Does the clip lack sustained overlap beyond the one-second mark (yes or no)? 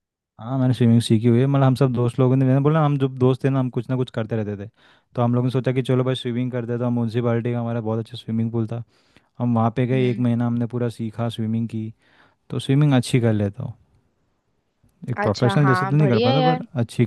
no